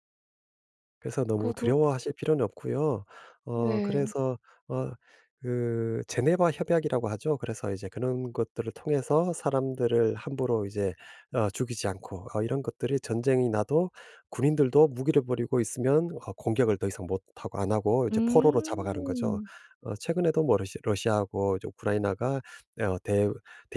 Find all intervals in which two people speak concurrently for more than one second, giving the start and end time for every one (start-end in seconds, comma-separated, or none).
18.1-19.4